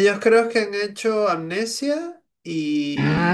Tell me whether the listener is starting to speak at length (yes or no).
yes